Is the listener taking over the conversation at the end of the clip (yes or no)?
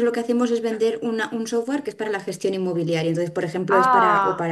no